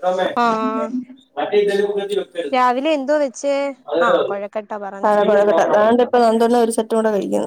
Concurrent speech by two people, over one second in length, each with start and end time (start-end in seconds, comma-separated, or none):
none